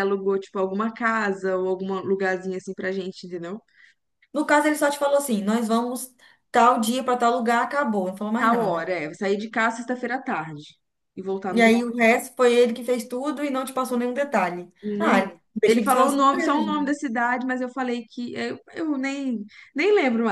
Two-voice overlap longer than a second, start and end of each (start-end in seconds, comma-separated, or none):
14.8-17.0